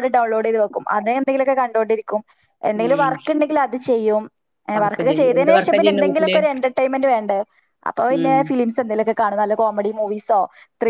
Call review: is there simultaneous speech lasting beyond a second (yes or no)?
yes